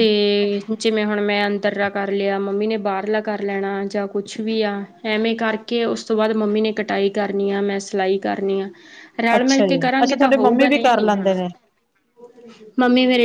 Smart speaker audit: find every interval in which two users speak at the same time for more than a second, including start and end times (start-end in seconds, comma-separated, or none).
9.3-11.4